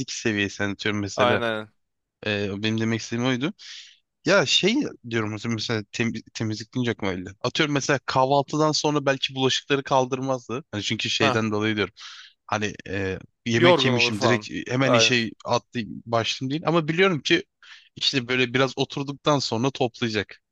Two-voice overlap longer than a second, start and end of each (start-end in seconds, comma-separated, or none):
13.6-15.2